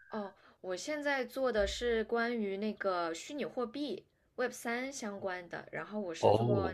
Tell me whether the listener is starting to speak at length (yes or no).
no